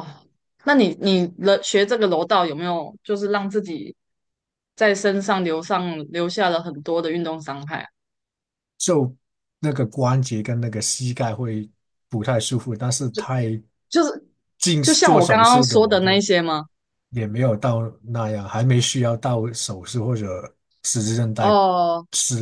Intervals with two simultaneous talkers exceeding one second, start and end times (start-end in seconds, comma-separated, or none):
14.8-16.2